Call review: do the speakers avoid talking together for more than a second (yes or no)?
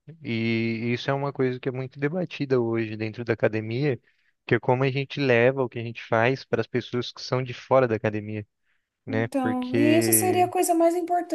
no